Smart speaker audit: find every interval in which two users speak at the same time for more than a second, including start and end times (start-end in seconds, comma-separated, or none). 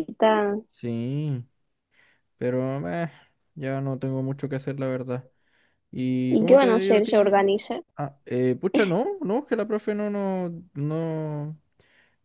6.3-7.6